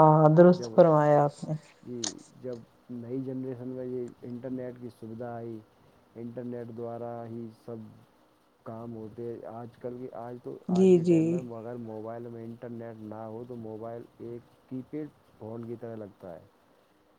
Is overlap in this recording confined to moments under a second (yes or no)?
yes